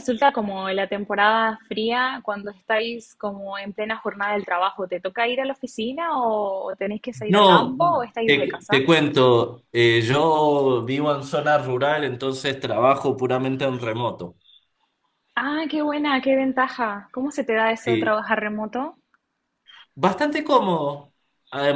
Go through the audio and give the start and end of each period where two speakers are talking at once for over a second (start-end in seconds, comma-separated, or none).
7.3-8.8